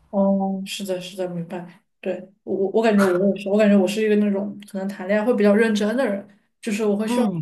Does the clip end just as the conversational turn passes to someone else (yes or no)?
no